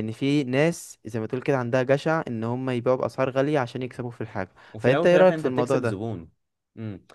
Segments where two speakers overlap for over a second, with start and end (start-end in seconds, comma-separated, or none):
4.7-6.1